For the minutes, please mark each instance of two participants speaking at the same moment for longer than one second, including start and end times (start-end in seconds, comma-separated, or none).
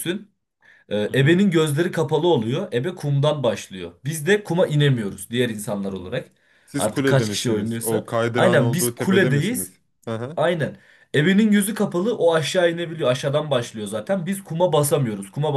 6.8-9.7